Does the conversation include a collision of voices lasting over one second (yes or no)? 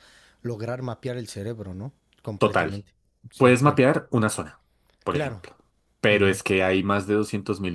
no